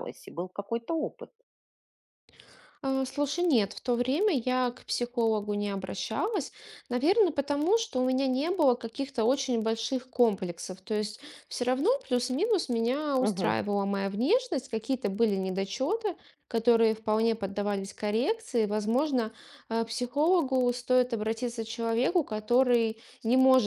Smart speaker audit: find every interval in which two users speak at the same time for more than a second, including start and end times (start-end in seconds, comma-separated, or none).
none